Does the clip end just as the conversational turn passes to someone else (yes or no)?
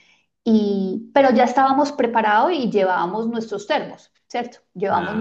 no